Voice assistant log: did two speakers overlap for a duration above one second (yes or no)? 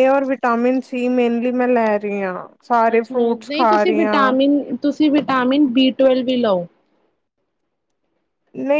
yes